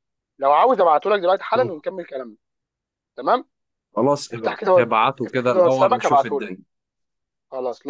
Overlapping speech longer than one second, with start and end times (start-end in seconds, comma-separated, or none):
4.3-6.5